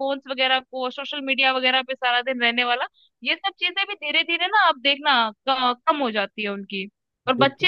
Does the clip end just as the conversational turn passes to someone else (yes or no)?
no